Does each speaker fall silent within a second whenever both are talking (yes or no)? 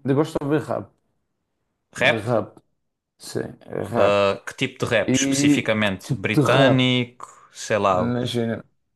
no